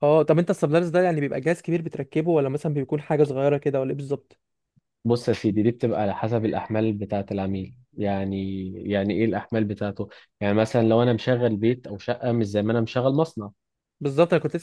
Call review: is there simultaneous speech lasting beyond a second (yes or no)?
no